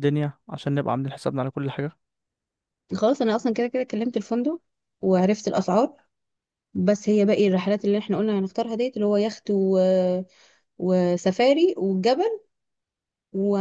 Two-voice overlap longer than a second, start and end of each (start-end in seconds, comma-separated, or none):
none